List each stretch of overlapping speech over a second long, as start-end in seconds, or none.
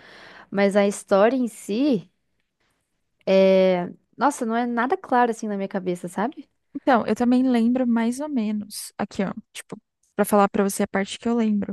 none